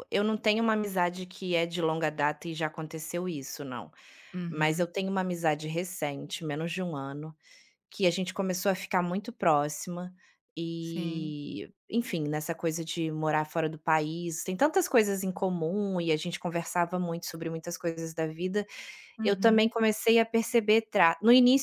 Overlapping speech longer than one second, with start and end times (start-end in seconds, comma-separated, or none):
none